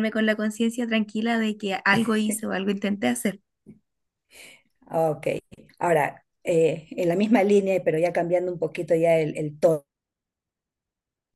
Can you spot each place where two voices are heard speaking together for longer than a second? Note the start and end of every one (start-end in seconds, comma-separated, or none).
none